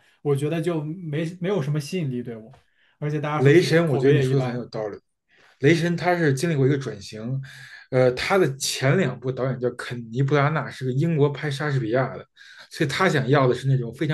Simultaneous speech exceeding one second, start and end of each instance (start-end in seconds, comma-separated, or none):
3.4-4.7